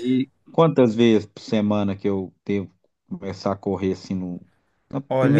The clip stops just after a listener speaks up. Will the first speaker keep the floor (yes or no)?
no